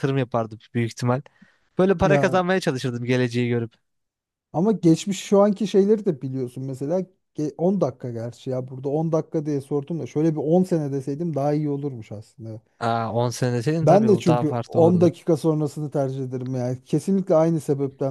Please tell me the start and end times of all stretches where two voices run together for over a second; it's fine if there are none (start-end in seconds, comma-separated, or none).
13.8-15.1